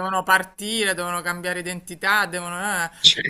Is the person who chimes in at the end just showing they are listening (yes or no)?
yes